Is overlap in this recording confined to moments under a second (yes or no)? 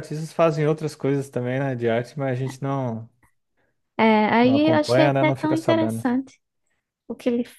no